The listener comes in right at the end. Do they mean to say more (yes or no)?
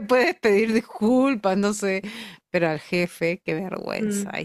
yes